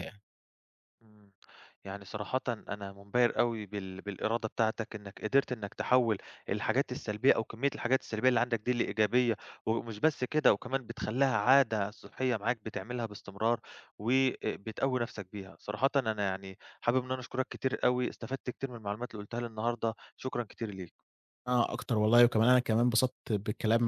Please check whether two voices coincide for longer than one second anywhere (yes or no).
no